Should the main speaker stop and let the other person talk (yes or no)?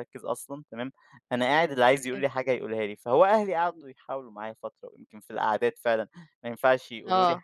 no